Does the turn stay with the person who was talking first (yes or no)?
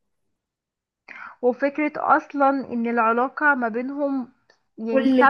no